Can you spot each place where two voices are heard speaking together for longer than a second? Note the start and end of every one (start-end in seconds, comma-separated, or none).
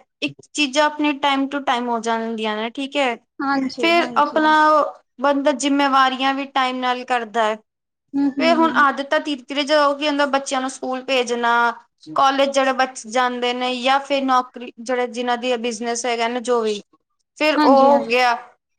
none